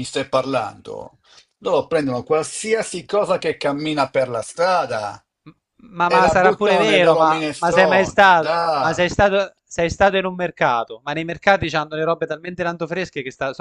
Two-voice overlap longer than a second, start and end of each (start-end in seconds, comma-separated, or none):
6.0-9.1